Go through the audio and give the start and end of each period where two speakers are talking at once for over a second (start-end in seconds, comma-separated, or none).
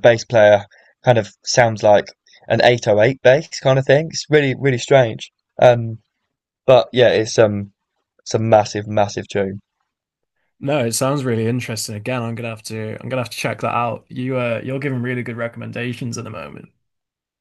none